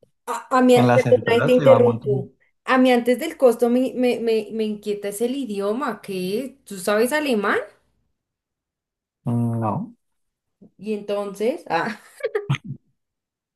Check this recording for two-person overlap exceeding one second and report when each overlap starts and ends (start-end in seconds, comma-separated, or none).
0.7-2.3